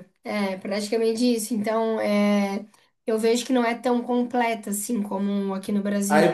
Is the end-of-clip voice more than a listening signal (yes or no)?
yes